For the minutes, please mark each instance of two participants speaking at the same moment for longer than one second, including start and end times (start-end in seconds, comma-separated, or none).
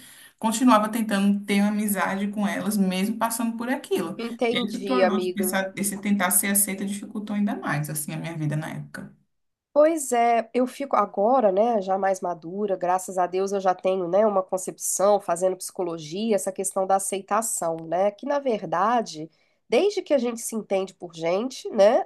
4.2-5.6